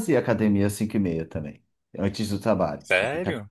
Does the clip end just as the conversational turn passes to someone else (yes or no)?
yes